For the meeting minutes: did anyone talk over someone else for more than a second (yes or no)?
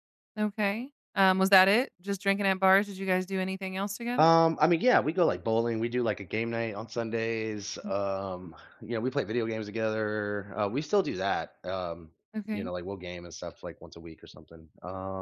no